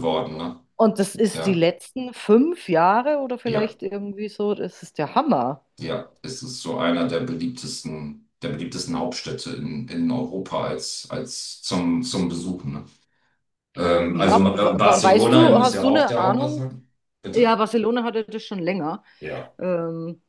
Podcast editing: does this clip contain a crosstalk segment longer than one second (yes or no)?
yes